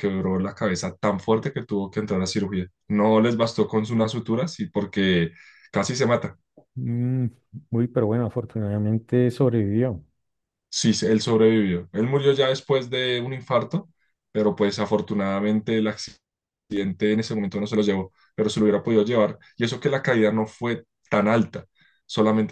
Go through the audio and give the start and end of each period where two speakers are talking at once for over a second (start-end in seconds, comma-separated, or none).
none